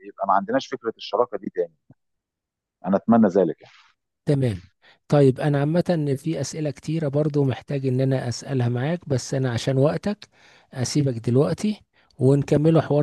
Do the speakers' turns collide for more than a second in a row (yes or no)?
no